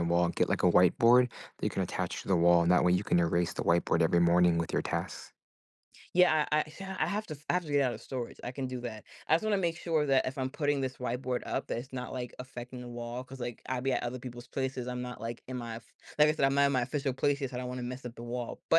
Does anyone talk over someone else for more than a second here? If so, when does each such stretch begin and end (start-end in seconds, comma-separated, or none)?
none